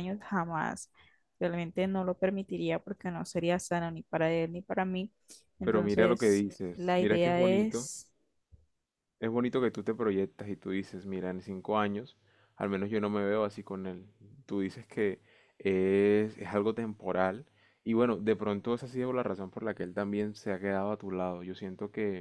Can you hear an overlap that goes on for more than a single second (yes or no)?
yes